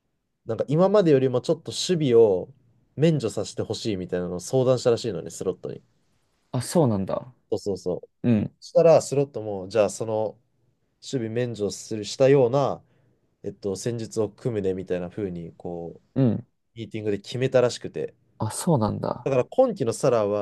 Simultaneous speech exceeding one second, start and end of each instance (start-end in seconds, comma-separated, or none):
none